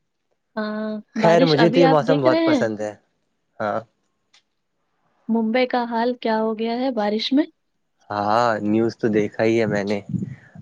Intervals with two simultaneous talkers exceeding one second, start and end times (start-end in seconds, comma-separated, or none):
1.2-2.7